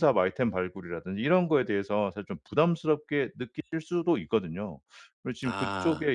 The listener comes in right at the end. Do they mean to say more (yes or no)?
no